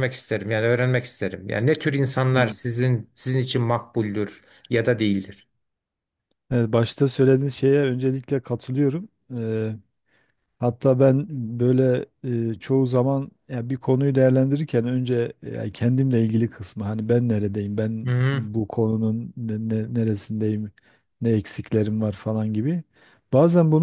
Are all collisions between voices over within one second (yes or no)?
yes